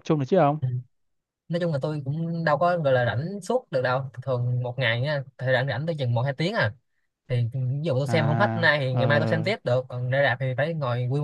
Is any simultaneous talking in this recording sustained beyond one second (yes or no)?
yes